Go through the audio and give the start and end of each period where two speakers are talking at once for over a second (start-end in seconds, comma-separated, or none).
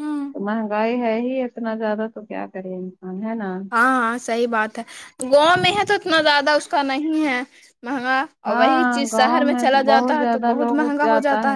8.5-10.9